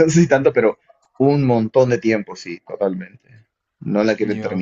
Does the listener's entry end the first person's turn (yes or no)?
no